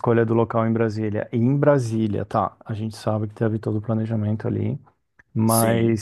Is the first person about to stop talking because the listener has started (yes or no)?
no